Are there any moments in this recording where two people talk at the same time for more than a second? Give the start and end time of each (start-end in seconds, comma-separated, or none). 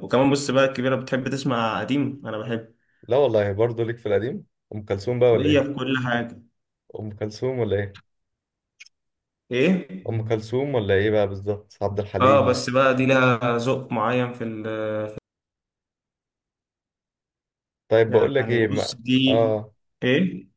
18.1-19.6